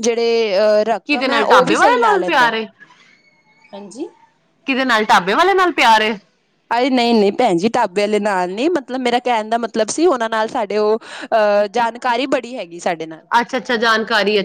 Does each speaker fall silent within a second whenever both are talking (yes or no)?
no